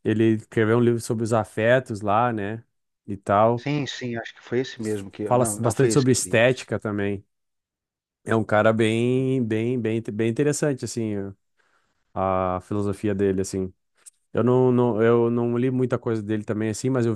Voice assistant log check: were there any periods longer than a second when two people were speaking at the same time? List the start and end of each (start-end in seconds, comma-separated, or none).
5.3-6.6